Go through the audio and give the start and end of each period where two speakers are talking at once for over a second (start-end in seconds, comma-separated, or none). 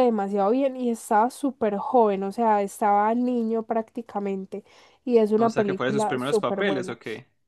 5.4-7.0